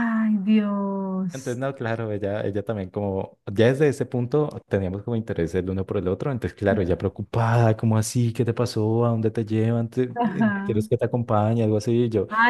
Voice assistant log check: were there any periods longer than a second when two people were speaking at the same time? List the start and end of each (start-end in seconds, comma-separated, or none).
none